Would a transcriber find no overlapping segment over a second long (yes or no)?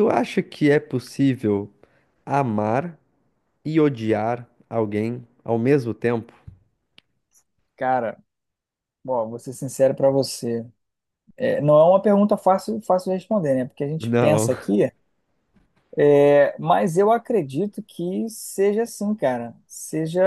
yes